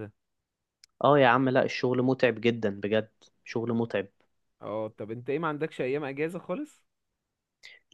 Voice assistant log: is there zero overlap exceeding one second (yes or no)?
yes